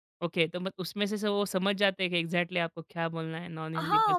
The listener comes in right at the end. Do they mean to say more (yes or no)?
yes